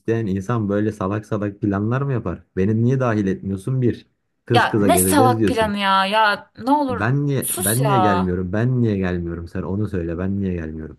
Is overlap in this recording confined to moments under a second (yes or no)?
no